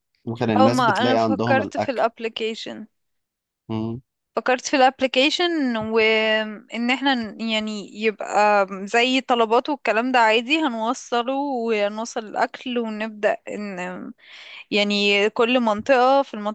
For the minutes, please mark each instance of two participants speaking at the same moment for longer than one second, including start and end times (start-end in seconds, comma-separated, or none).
0.6-2.1